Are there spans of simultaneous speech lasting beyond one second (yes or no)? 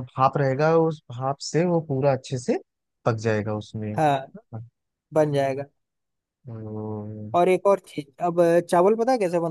no